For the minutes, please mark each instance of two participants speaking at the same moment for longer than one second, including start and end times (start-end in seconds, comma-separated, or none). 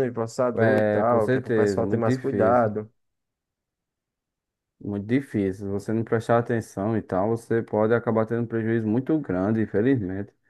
0.6-2.8